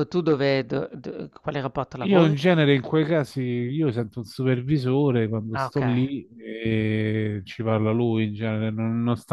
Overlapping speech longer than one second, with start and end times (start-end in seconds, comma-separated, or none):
none